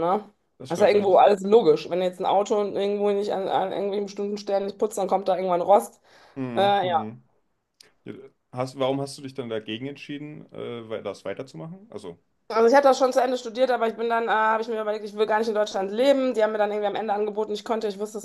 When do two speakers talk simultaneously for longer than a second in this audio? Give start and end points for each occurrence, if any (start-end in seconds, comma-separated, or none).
none